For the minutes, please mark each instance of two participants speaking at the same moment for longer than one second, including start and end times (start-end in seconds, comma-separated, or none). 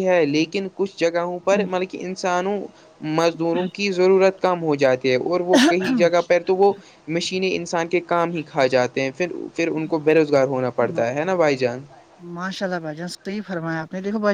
none